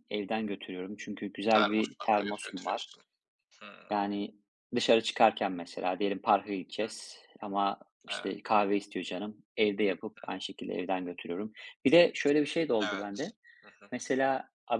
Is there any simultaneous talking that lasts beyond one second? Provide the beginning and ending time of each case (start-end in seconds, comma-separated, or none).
1.5-2.9